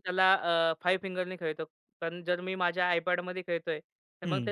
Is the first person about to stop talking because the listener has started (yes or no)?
no